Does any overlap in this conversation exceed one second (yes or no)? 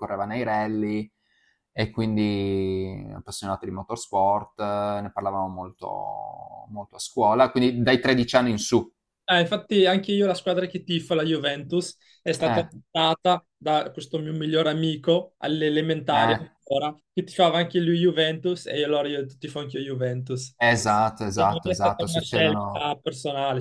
yes